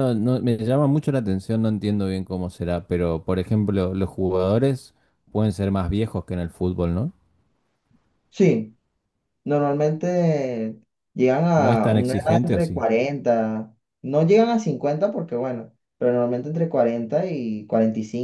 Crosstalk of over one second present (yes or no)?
yes